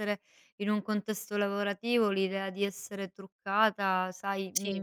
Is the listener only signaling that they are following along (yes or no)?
yes